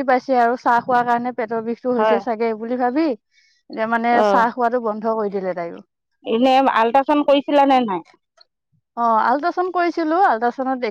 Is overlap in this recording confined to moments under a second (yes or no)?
yes